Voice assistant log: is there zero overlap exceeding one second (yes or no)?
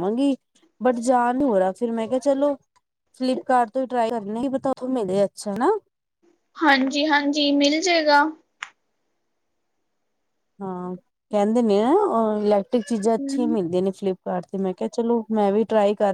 yes